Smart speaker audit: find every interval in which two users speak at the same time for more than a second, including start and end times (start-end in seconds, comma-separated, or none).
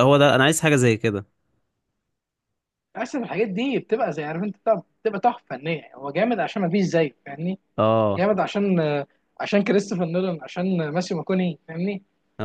none